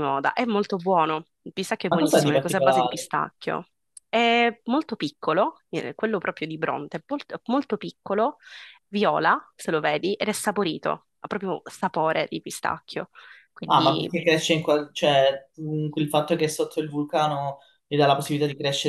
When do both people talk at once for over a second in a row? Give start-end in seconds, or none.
1.9-3.1